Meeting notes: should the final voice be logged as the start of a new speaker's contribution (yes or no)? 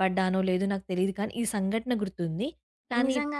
yes